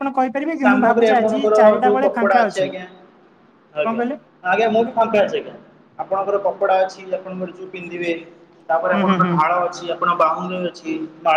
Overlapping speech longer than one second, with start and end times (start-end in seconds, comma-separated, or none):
0.6-2.8